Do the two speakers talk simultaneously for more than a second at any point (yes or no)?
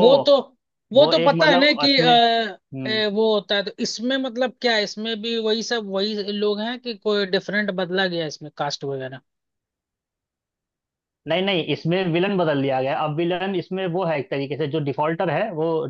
yes